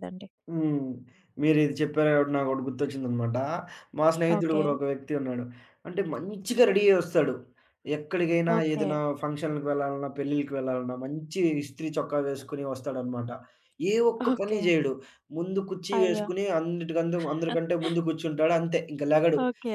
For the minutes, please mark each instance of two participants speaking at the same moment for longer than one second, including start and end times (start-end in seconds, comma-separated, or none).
none